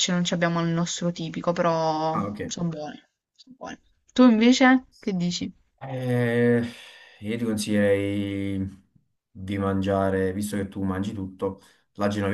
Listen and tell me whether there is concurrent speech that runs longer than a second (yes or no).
no